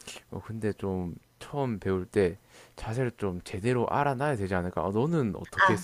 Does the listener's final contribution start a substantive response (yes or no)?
yes